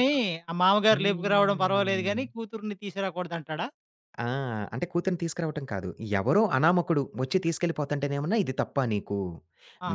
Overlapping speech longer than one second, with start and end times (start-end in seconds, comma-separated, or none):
0.9-2.2